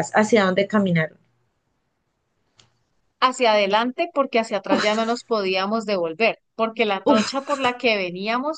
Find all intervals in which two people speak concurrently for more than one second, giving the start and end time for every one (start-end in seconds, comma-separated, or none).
none